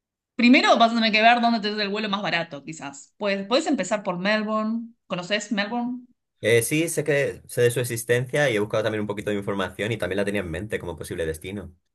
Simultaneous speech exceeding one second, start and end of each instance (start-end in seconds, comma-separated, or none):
none